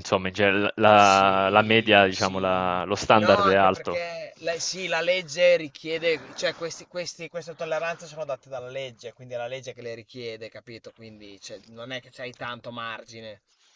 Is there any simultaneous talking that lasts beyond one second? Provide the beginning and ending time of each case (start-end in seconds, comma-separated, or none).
0.9-4.0